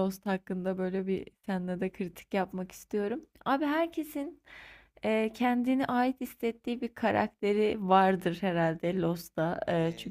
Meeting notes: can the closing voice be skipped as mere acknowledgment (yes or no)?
no